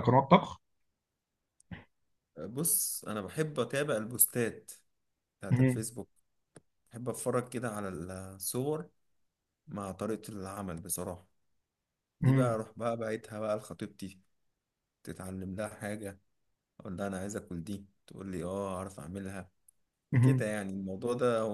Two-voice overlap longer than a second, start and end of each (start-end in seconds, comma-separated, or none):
none